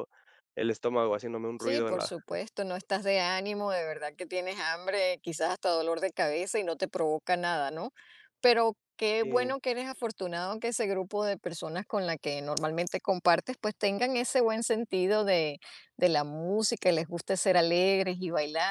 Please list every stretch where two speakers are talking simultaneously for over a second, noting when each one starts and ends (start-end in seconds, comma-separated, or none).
none